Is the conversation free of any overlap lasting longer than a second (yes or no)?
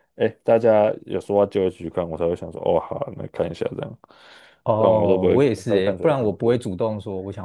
no